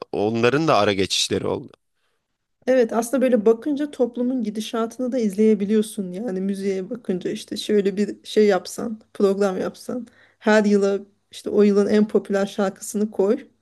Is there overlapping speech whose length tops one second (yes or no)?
no